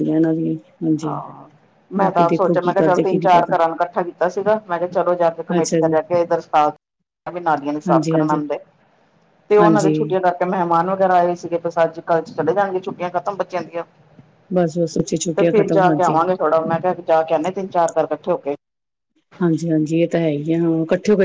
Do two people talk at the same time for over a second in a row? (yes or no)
yes